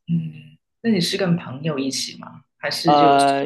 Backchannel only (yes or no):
no